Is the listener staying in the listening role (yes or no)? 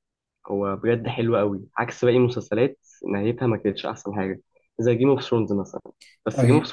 yes